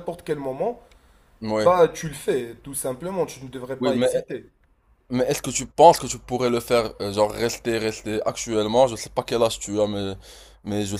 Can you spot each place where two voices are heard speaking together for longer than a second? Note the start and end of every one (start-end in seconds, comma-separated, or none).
none